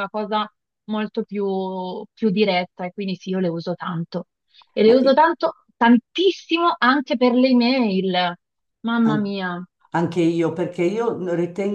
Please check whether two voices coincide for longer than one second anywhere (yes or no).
no